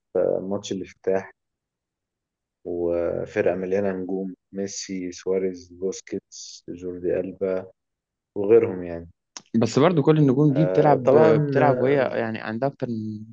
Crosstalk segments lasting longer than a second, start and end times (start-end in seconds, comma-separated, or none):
10.5-12.0